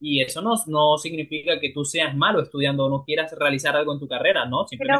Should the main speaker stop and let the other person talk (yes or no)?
yes